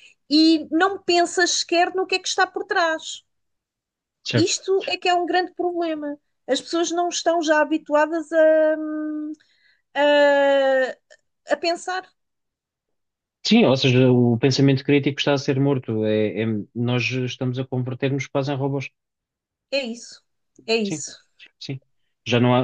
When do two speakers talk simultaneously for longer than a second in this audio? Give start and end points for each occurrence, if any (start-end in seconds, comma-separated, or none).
none